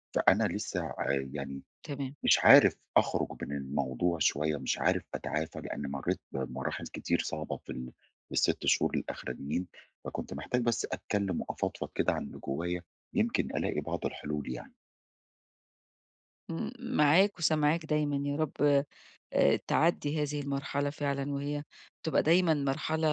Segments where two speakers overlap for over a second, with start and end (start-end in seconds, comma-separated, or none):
none